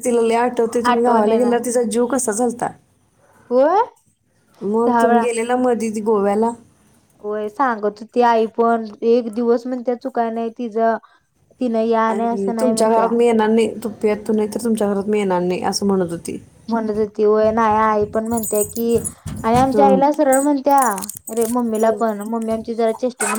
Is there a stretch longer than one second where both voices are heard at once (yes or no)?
no